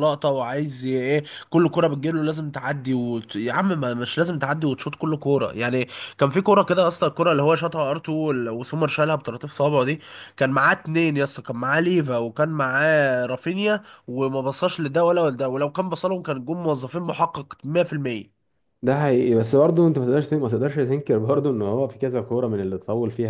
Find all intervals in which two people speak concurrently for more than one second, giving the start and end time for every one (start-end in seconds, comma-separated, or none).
none